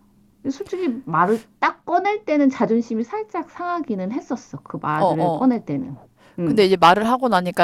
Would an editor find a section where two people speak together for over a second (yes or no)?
no